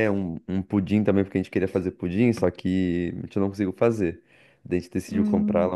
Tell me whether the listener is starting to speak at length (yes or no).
no